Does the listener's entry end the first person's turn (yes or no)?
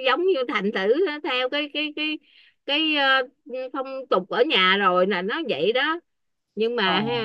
no